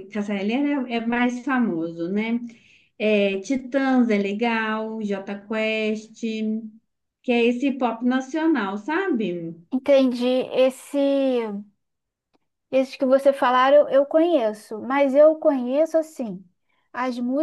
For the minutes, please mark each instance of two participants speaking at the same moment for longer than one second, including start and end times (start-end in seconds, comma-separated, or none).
none